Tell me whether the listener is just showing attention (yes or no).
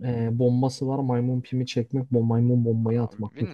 no